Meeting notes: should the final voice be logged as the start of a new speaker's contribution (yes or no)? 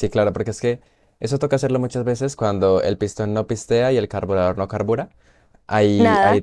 no